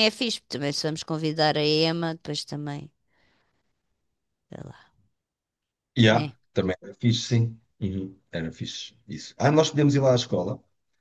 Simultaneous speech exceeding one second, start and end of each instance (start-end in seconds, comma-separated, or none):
none